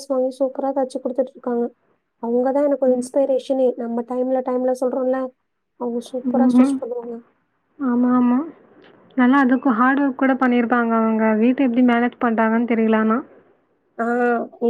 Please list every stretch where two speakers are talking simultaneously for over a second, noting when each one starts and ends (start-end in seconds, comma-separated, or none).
none